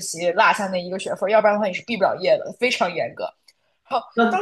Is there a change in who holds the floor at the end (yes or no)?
yes